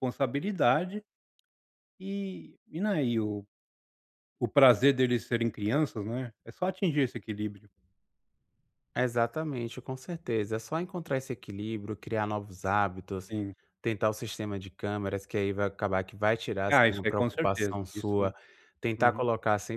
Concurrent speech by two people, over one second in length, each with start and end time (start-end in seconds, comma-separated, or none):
16.7-18.2